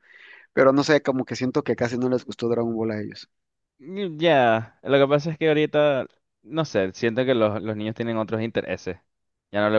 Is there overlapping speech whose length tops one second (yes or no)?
no